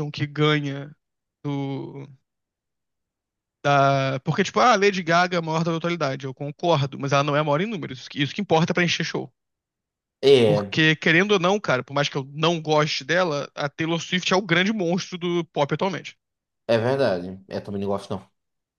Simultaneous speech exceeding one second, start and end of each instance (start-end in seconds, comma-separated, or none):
none